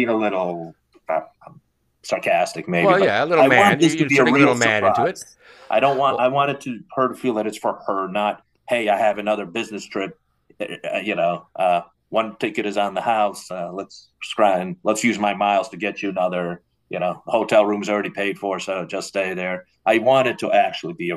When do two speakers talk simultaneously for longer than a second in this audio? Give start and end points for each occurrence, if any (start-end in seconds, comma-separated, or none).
2.8-5.2